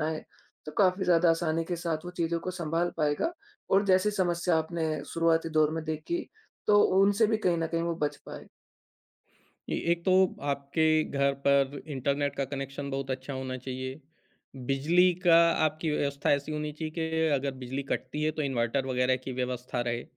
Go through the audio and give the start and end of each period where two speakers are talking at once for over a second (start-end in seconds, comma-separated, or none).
none